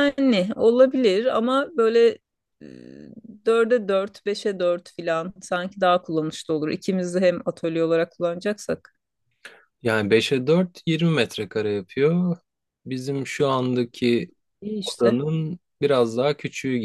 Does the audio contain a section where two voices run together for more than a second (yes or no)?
no